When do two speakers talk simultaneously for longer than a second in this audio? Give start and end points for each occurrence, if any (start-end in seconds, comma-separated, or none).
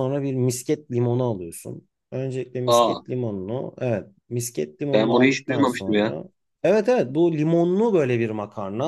4.9-6.2